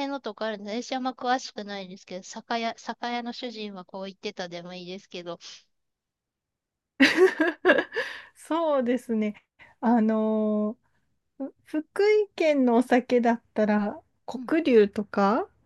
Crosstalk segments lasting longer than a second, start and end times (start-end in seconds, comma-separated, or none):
none